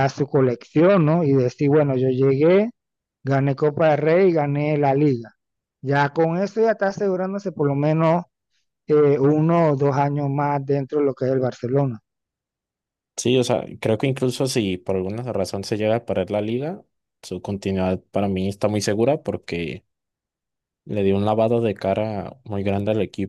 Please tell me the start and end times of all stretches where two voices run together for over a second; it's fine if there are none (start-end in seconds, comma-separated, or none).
none